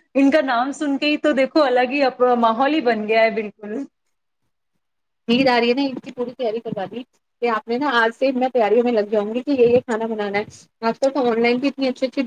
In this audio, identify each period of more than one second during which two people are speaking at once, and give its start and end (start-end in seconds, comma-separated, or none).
none